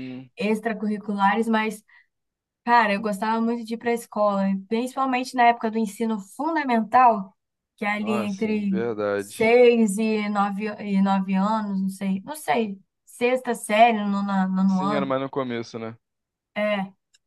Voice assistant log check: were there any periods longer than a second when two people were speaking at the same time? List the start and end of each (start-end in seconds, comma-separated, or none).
7.9-9.6